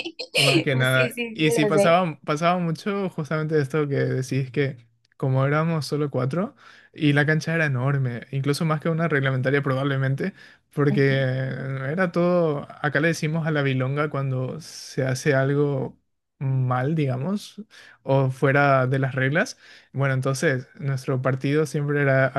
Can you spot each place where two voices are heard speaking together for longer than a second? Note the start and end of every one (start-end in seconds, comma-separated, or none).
0.7-2.0